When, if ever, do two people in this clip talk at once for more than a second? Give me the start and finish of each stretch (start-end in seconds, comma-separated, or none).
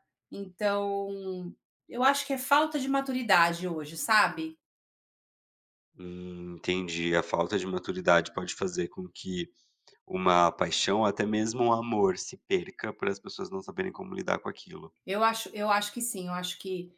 none